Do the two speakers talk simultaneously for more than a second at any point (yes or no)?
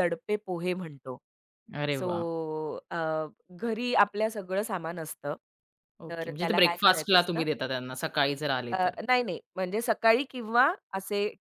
yes